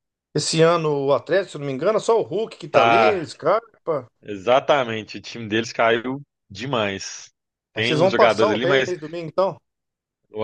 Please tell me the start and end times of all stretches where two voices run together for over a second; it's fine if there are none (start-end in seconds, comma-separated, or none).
7.8-8.9